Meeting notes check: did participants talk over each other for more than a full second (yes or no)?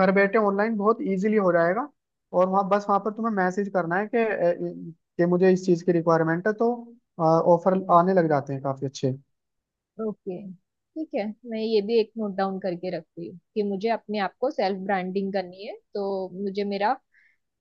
no